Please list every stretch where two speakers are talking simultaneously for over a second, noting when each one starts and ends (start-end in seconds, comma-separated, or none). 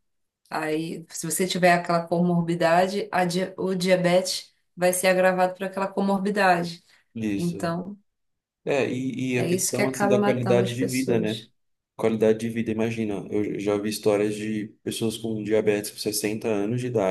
9.3-11.4